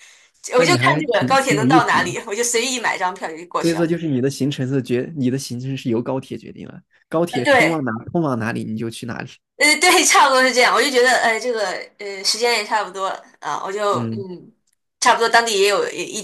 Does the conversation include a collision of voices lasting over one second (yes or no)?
yes